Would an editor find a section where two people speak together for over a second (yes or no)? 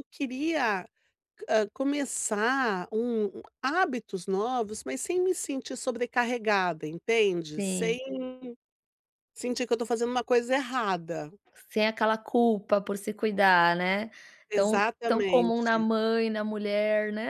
yes